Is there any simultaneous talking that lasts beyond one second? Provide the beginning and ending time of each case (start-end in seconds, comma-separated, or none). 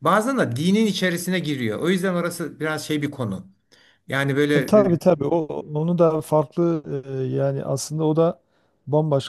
none